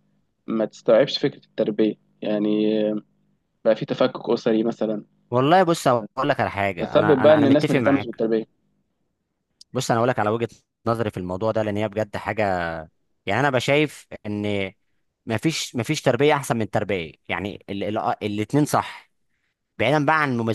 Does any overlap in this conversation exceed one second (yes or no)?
yes